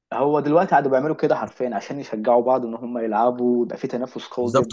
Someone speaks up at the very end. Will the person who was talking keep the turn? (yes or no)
no